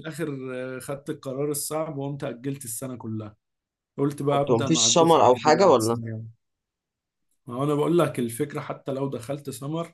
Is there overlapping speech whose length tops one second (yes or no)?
yes